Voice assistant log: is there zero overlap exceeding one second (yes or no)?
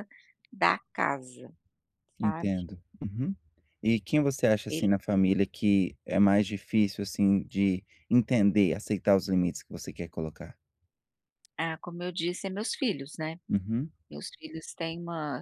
yes